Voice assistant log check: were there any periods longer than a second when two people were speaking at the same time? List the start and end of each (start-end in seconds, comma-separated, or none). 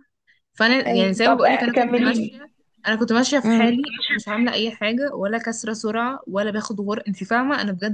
0.9-2.5